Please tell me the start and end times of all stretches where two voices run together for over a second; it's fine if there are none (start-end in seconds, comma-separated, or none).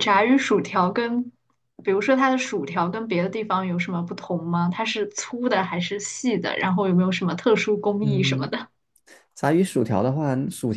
none